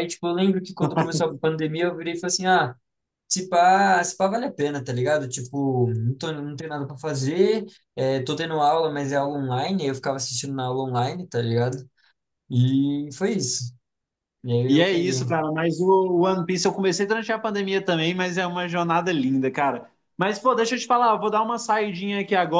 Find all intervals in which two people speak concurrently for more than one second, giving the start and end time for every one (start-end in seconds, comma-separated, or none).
none